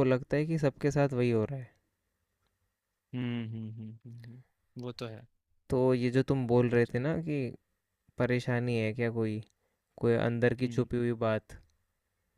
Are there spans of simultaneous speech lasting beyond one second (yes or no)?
no